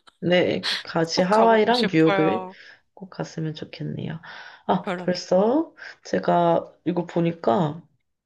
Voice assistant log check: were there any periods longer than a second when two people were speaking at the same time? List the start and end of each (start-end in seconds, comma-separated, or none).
1.1-2.5